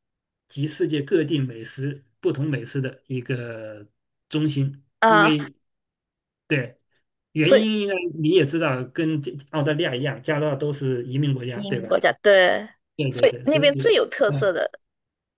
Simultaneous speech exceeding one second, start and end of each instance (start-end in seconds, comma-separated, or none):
13.1-14.5